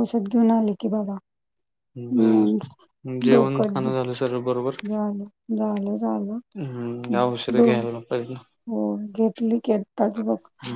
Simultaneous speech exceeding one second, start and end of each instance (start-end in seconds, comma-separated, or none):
3.2-4.8